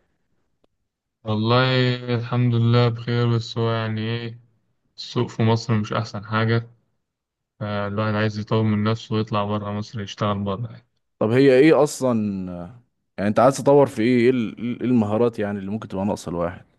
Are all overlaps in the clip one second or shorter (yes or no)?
yes